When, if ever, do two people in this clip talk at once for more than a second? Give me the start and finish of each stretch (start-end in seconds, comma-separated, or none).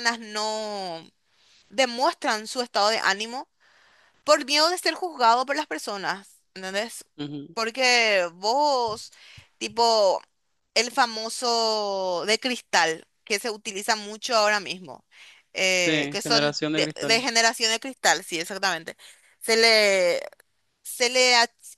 15.7-17.2